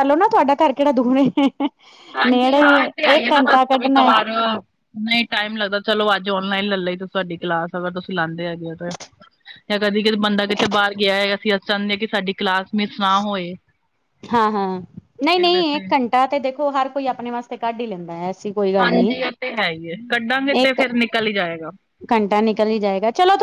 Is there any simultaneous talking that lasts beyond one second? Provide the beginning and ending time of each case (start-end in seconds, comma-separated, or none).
2.3-4.1